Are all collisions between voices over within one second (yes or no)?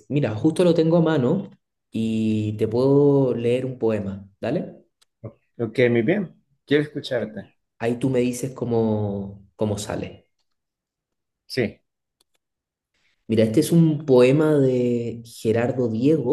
yes